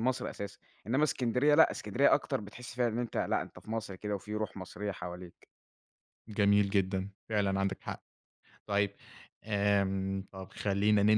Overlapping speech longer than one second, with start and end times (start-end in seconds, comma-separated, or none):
none